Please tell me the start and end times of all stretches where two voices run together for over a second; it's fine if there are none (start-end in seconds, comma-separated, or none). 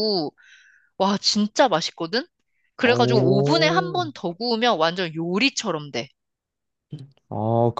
2.8-4.1